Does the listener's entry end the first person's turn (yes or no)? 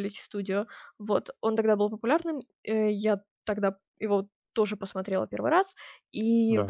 no